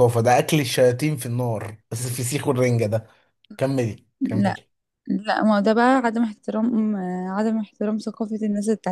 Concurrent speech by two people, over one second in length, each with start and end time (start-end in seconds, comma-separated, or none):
none